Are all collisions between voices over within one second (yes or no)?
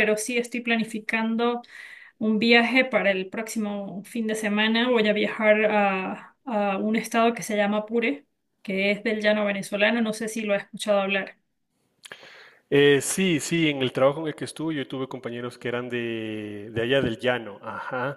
yes